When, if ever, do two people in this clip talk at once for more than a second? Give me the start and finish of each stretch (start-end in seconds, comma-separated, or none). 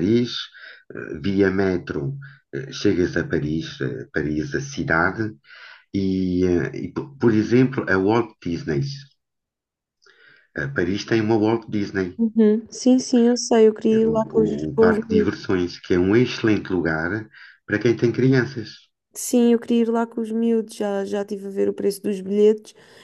13.9-15.3